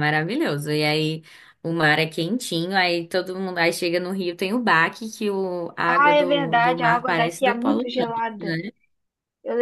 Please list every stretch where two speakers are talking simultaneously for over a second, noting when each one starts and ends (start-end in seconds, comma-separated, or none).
5.9-8.6